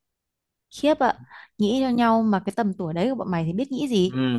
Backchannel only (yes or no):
no